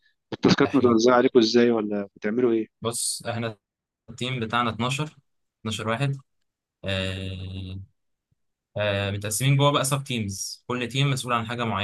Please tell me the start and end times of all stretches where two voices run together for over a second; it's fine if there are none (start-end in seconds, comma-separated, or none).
none